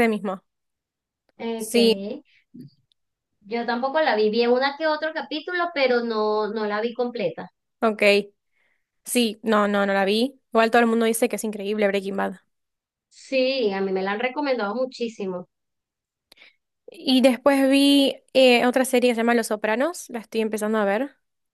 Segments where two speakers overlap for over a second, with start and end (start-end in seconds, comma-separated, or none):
none